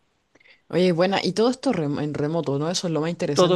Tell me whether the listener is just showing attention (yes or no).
no